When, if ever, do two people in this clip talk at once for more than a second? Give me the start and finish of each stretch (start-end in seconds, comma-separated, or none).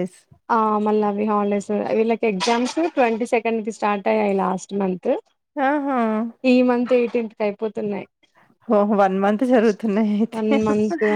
none